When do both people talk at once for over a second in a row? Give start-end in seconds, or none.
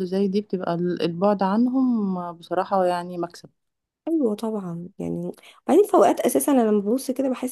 none